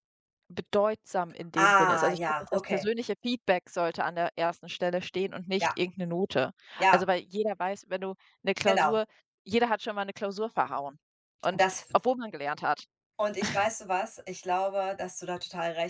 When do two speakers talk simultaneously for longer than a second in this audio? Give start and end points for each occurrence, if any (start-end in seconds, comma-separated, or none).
1.6-2.9